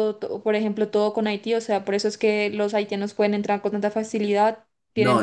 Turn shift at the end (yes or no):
yes